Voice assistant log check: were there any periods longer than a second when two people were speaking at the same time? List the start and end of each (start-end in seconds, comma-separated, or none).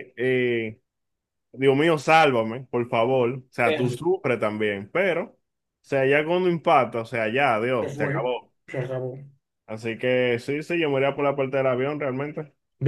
none